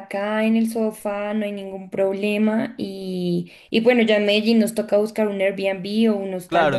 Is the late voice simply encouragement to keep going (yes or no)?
no